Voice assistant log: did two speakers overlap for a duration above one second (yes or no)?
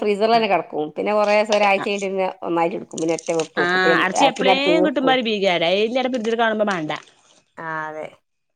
yes